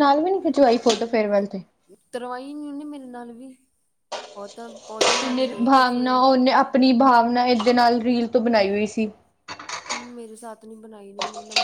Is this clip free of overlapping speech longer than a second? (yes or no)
yes